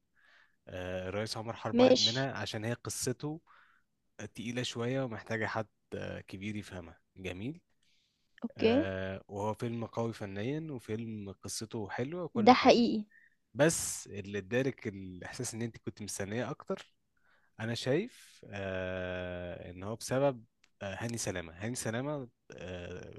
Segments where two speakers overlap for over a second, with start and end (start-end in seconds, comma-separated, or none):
none